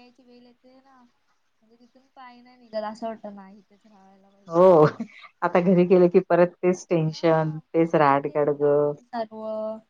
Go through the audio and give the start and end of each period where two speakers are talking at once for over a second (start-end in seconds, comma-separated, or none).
none